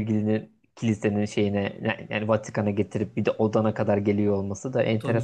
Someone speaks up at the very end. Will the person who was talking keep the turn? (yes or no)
no